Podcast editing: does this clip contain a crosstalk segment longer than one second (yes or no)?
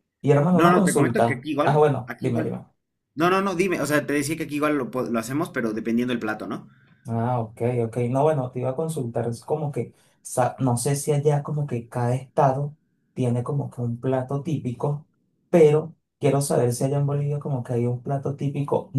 yes